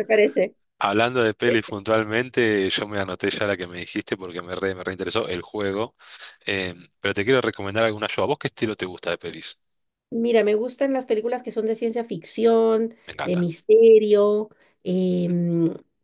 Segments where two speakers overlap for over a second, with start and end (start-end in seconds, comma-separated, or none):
none